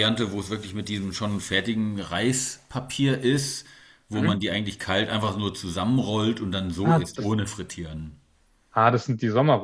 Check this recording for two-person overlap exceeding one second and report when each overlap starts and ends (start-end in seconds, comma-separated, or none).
none